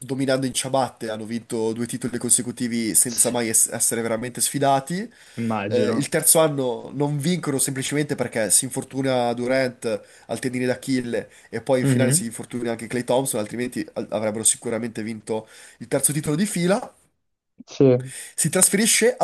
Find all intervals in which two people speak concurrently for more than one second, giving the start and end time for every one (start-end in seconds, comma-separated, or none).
none